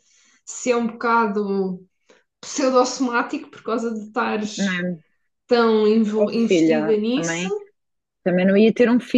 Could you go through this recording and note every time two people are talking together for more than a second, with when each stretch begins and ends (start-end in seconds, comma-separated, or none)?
6.2-7.5